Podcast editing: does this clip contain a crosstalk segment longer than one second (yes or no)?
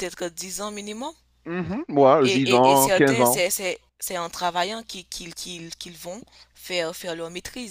yes